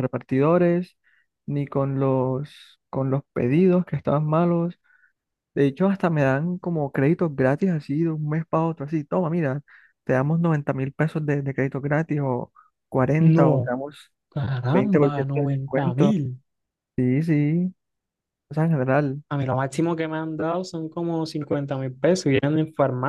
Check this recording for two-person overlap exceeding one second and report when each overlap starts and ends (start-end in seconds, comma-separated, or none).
14.7-16.2